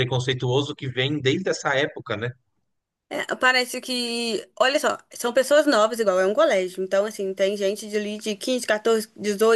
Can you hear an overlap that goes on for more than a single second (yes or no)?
no